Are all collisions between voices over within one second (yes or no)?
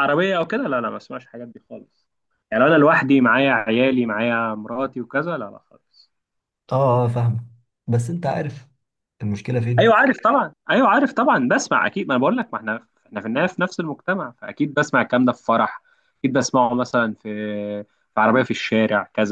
yes